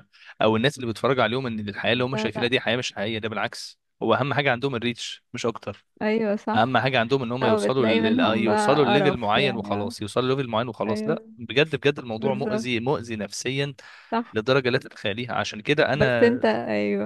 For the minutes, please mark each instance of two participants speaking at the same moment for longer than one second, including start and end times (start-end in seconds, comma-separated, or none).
7.4-9.9